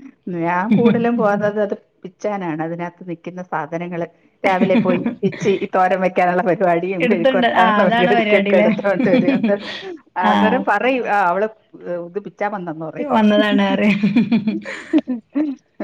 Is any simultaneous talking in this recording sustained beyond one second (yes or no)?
yes